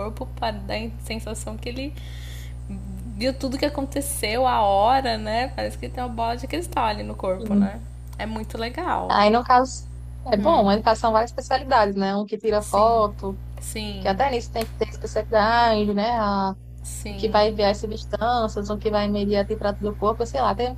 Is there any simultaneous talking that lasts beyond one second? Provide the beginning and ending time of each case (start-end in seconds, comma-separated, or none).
none